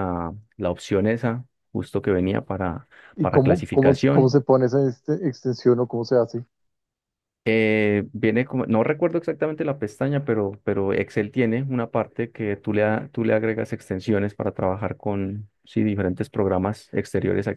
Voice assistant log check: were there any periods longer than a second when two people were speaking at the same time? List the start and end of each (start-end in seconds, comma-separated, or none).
3.1-4.4